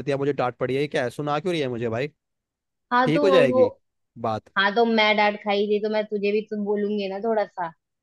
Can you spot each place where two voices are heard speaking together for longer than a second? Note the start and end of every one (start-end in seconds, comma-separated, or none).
none